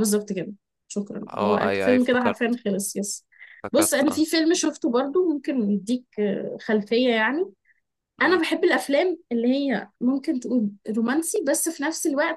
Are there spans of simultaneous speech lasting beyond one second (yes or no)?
yes